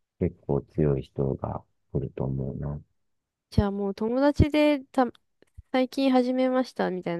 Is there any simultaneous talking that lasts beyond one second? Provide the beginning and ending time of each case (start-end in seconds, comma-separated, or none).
none